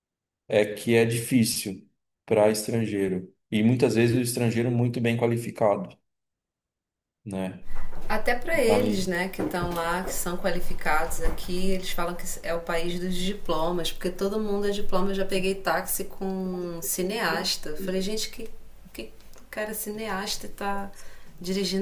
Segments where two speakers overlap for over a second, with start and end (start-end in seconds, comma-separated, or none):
none